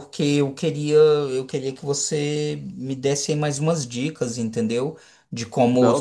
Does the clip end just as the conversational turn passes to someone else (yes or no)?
no